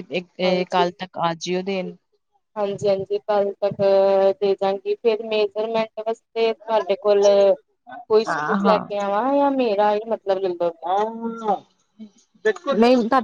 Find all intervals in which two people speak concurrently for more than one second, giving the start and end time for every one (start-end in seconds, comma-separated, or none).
none